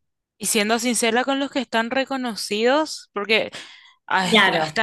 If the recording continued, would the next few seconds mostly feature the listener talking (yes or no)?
no